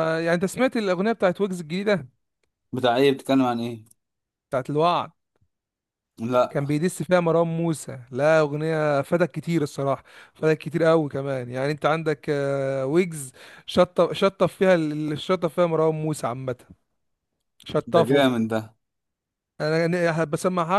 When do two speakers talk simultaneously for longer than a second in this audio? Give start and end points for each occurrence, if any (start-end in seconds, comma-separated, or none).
none